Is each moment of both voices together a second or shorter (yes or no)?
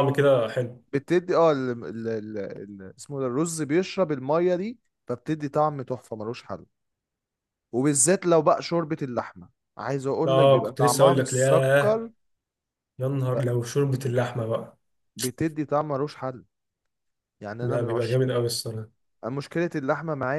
no